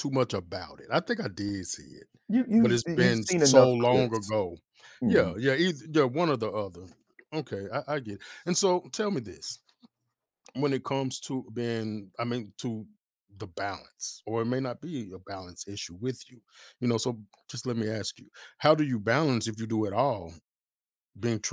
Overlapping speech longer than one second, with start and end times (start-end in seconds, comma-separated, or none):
2.6-4.3